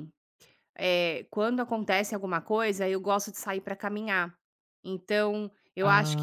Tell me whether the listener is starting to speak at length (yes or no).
no